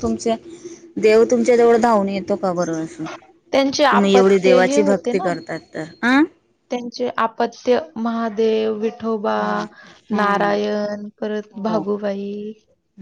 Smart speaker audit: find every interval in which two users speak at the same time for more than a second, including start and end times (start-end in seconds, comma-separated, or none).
3.9-5.3